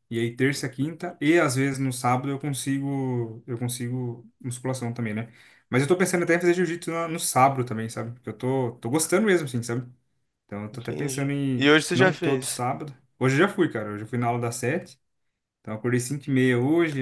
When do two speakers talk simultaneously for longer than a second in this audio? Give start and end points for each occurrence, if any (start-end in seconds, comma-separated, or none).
10.7-12.6